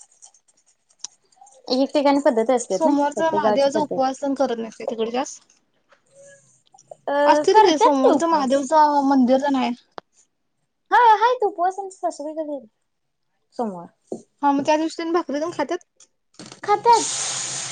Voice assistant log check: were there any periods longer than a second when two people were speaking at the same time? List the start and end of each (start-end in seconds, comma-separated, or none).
7.3-8.7